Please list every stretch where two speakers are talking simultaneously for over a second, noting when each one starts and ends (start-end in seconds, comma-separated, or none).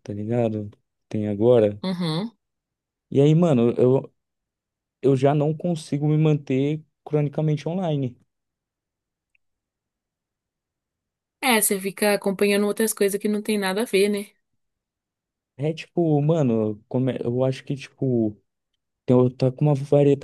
none